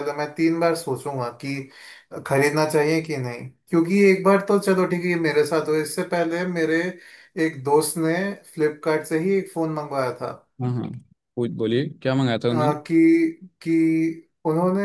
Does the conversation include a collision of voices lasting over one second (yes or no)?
no